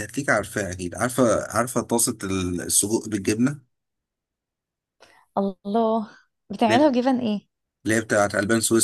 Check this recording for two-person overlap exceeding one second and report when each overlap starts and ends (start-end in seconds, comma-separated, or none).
none